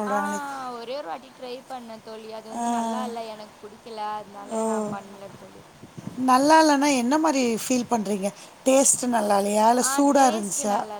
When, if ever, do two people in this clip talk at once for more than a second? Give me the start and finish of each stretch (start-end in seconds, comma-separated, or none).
none